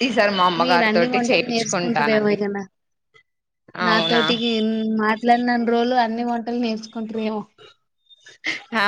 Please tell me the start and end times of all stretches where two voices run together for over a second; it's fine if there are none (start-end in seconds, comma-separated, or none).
0.6-2.4